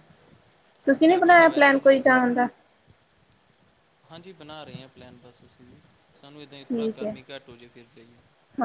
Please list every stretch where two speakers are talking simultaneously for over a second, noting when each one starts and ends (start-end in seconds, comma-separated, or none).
1.1-2.4